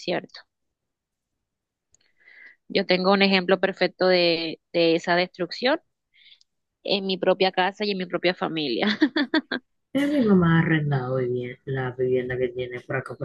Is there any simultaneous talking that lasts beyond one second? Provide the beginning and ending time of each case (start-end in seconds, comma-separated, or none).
none